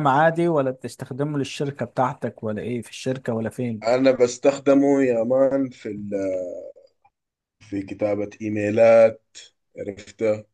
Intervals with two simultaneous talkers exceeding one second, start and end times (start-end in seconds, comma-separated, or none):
none